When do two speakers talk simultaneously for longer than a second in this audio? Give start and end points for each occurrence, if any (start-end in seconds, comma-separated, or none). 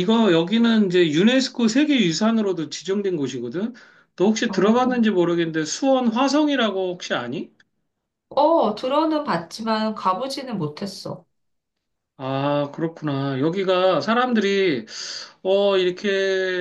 none